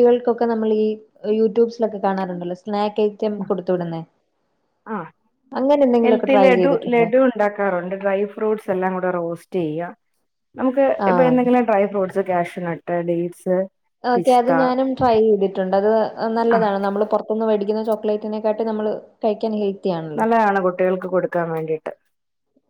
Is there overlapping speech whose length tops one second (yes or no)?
no